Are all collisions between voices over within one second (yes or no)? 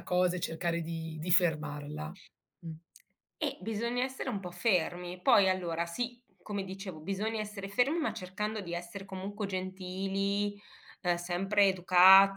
yes